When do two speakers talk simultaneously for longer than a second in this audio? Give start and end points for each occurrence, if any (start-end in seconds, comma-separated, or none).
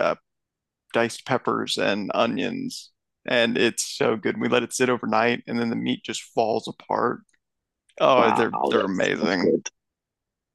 8.2-9.5